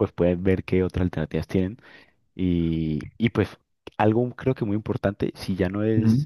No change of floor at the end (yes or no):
yes